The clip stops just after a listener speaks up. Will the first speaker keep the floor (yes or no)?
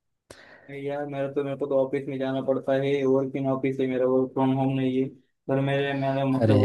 yes